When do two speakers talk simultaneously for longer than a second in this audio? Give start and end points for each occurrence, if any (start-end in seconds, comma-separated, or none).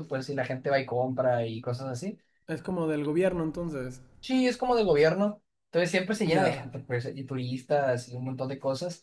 none